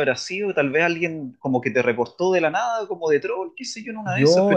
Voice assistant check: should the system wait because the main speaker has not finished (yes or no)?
yes